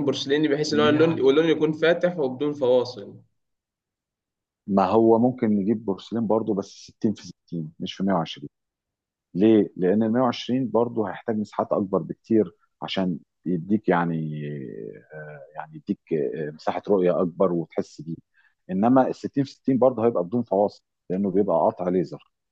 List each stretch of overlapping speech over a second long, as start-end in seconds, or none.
none